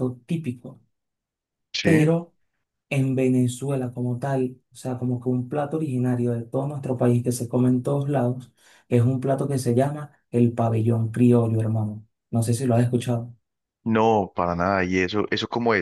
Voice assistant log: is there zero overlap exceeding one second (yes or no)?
yes